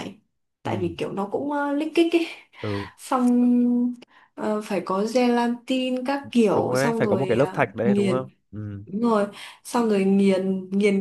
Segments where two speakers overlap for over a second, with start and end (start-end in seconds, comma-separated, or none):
6.5-8.3